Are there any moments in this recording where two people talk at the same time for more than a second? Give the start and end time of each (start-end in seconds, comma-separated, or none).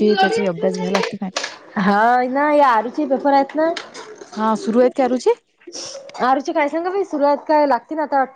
none